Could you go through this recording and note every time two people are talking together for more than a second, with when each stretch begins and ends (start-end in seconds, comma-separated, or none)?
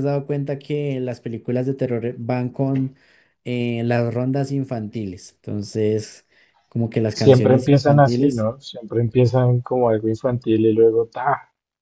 7.1-8.5